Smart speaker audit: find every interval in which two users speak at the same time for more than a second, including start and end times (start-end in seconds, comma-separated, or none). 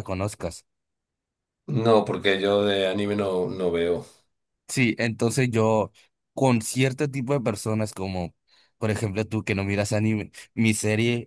none